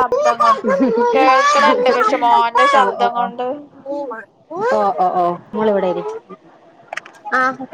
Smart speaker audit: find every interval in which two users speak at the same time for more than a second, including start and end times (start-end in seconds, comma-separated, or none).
none